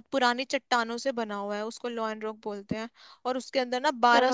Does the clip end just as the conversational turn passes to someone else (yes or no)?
no